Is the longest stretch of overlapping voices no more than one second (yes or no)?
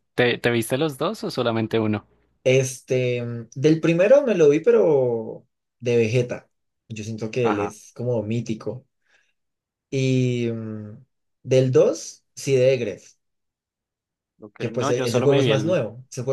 no